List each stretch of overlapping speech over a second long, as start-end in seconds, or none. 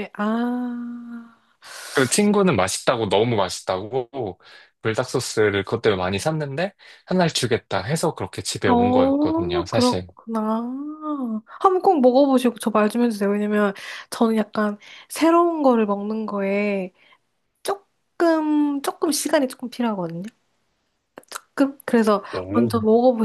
8.7-10.1